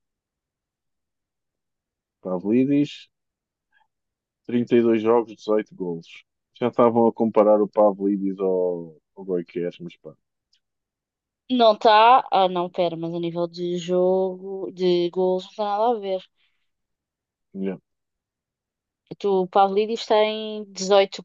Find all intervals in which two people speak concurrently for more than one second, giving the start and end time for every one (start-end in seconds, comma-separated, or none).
none